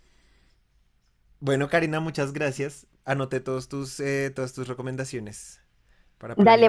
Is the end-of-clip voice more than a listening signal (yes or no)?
yes